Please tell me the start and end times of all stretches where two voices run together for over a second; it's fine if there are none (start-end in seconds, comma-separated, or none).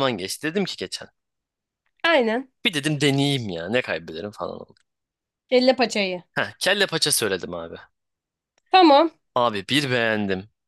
none